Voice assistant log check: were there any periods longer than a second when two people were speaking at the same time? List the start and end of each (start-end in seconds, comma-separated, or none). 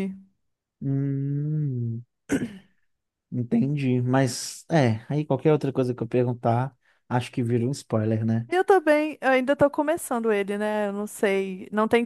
none